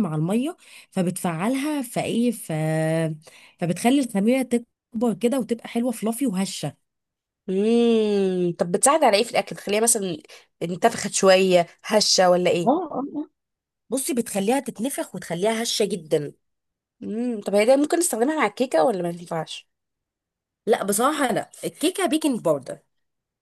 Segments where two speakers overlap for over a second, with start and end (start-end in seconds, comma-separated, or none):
none